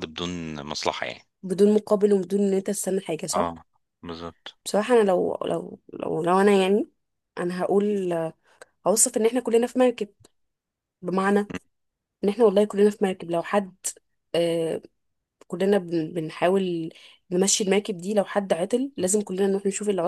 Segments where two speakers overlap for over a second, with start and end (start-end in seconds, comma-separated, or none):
none